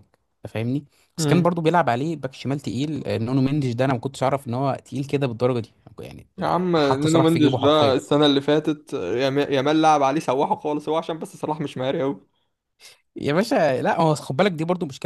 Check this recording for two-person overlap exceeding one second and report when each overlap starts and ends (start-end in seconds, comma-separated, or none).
6.4-8.0